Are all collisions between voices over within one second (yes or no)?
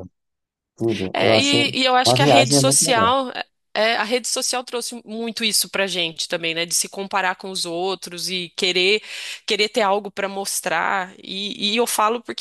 no